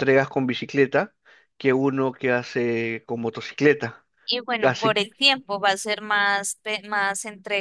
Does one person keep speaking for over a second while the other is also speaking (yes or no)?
no